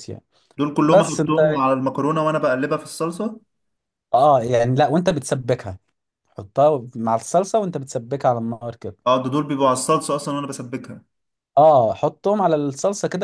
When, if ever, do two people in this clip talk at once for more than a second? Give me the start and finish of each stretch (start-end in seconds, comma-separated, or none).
none